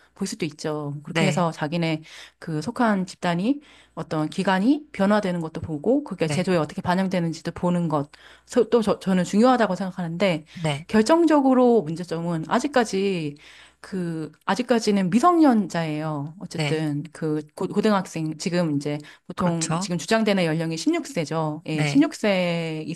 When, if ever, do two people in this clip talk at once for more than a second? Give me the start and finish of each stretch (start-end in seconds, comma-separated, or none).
none